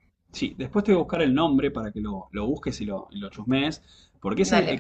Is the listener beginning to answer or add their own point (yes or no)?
no